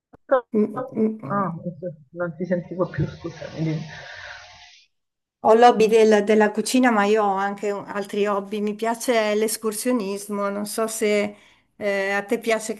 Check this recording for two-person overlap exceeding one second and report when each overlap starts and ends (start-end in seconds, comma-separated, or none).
none